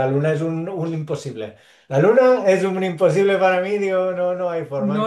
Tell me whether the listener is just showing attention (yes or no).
no